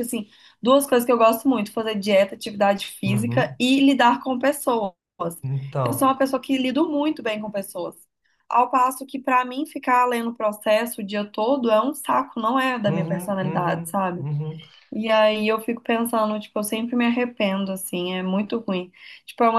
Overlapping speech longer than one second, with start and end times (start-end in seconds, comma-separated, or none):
12.9-14.3